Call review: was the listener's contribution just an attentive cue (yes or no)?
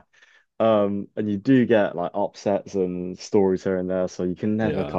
yes